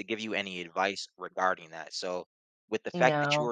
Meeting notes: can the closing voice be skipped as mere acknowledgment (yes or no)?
yes